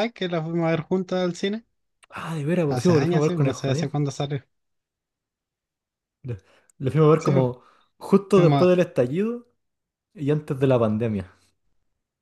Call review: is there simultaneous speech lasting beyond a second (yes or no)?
yes